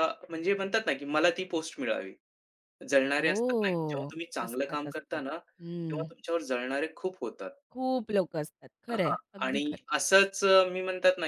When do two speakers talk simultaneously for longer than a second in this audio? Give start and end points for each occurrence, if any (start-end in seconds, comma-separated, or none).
3.2-5.2